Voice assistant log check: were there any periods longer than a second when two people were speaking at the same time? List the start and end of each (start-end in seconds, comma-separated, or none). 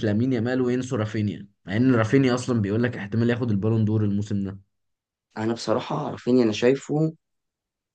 none